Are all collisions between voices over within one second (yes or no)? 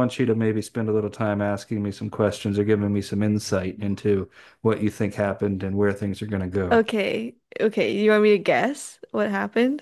yes